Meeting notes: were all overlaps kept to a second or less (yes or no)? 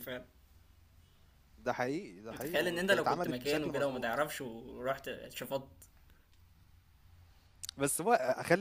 no